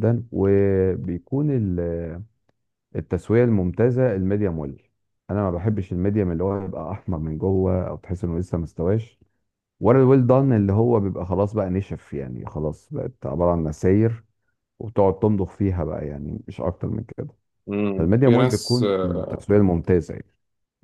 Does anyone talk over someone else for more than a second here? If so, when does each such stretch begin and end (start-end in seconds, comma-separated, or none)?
17.9-19.2